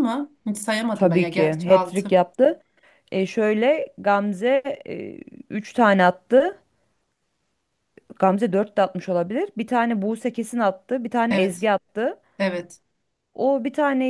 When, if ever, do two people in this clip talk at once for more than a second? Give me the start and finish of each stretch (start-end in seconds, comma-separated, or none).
0.9-2.2